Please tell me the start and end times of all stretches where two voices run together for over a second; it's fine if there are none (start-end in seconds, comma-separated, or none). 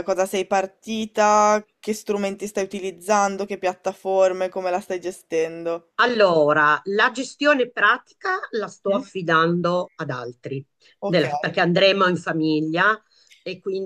none